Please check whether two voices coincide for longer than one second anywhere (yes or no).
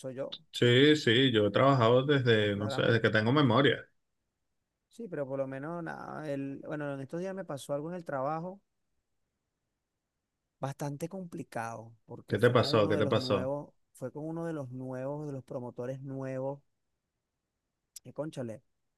yes